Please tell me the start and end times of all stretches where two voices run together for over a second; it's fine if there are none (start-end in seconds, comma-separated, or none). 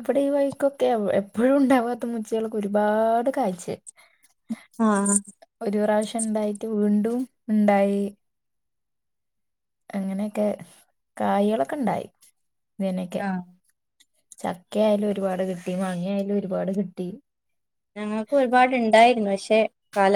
none